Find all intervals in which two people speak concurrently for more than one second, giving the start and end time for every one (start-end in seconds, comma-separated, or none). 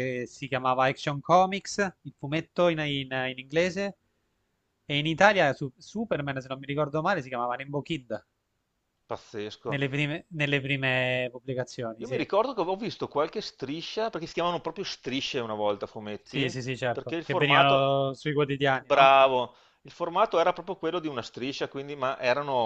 16.2-18.0